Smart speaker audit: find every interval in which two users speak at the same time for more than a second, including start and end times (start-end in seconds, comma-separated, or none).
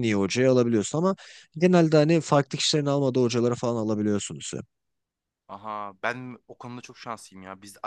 none